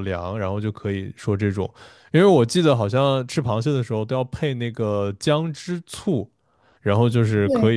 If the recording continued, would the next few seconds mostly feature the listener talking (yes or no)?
no